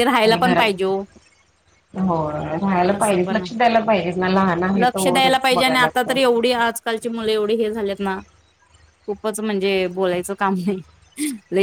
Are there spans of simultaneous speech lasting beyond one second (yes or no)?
yes